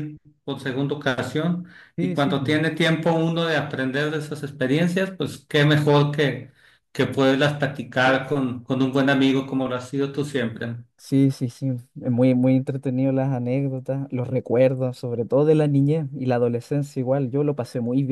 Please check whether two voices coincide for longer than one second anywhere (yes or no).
no